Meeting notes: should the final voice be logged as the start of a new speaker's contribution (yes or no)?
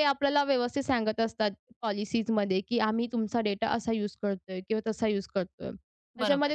no